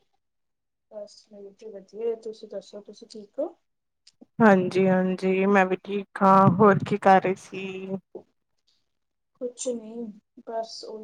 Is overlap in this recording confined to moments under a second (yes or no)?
yes